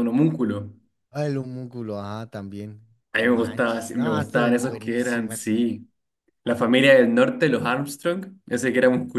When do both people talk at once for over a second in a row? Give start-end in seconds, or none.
3.1-5.5